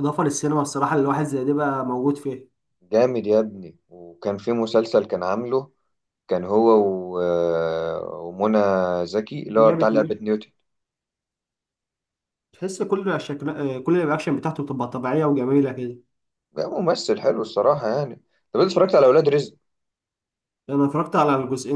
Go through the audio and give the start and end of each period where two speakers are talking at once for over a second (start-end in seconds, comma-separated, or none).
none